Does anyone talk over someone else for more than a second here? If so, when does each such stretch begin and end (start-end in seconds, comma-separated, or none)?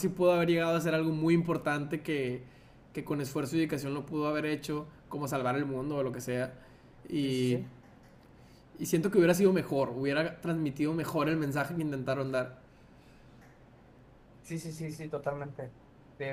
none